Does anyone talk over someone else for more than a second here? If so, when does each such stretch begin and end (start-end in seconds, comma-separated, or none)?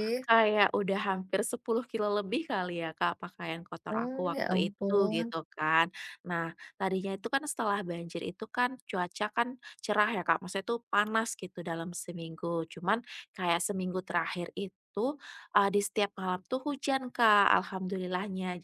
3.9-5.3